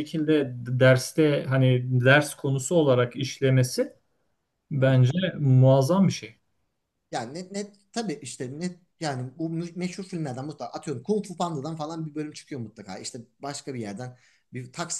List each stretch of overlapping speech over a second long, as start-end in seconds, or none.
none